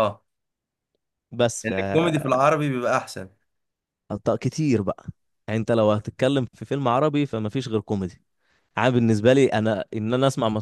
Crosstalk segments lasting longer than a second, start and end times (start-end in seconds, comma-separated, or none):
none